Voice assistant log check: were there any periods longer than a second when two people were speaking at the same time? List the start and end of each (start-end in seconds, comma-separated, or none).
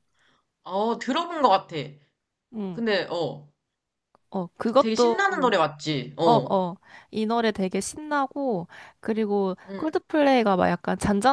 none